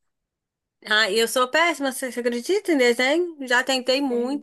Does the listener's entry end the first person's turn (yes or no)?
no